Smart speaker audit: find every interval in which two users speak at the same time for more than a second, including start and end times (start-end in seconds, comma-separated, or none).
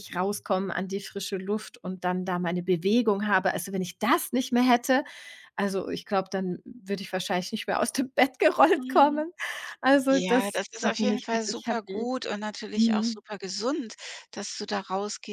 10.1-12.1